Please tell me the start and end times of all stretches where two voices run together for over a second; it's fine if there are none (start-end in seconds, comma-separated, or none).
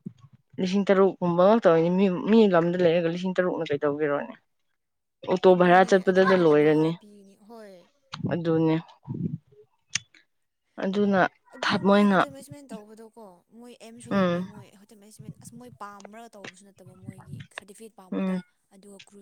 5.5-6.9